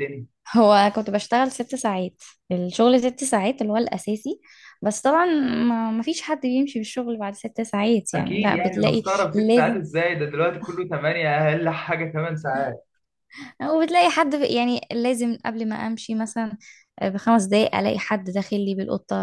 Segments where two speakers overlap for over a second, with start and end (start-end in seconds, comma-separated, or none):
8.1-9.8